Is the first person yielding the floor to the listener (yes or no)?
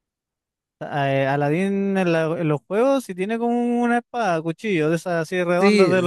yes